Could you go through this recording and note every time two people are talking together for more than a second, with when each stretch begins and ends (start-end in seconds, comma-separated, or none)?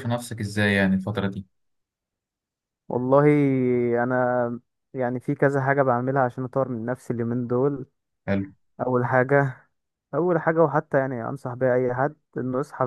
none